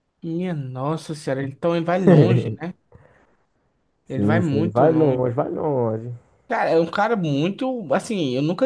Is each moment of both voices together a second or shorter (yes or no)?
no